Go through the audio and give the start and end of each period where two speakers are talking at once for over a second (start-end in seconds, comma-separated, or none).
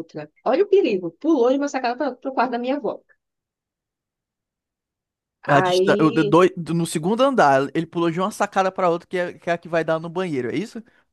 none